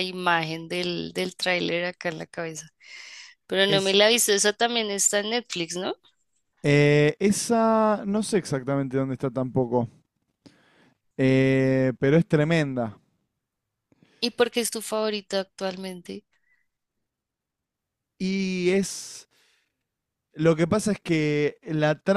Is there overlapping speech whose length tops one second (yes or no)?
no